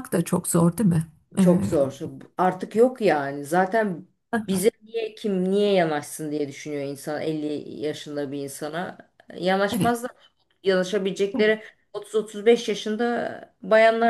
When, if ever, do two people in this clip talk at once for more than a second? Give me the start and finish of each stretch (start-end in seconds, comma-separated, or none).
none